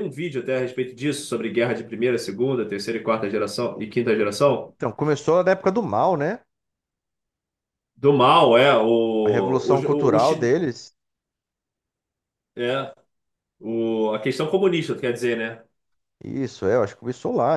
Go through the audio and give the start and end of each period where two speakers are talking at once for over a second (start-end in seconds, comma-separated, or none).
9.2-10.6